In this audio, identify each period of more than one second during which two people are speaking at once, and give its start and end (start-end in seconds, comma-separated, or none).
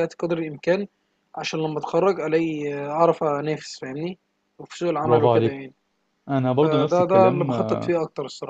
6.6-7.9